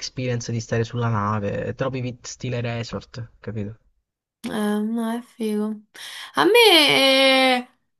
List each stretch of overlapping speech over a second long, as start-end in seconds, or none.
none